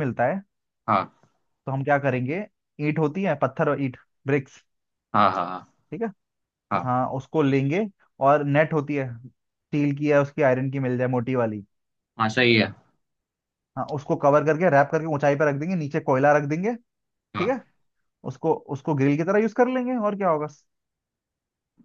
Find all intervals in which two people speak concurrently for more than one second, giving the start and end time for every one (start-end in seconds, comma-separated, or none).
none